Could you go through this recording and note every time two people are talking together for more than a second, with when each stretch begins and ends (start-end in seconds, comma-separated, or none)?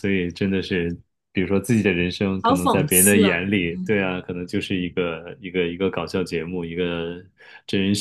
2.4-3.9